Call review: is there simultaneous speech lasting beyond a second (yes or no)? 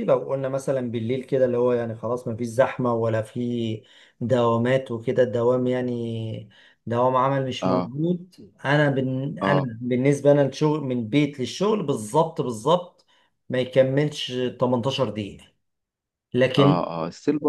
no